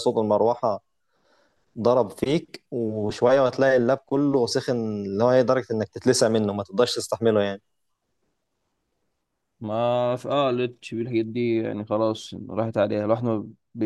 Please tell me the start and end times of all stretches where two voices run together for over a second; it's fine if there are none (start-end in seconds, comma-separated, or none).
none